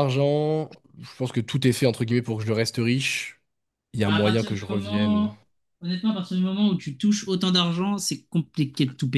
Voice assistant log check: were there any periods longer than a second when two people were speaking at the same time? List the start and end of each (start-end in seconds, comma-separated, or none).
4.0-5.3